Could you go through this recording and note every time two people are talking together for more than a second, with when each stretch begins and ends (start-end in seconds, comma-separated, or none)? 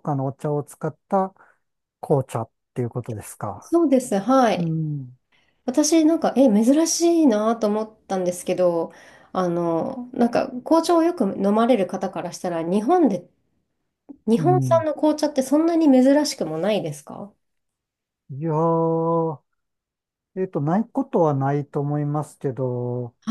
none